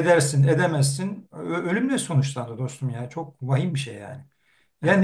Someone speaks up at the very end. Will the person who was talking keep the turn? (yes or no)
yes